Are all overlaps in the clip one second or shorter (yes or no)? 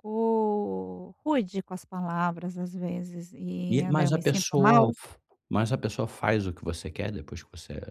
no